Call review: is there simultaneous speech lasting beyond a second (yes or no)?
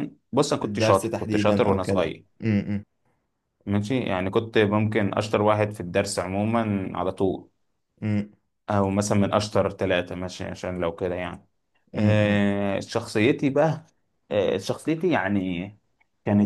yes